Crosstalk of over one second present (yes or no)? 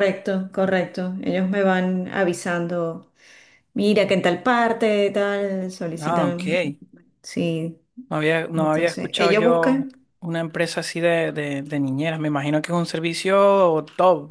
yes